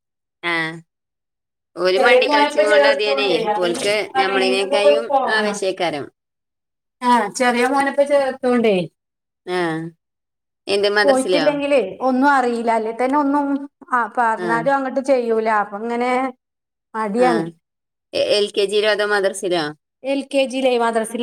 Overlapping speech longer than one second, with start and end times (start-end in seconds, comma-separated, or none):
2.0-5.6